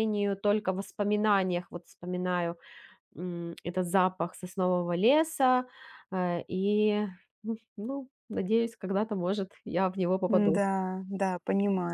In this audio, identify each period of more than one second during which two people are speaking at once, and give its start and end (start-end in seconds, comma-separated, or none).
none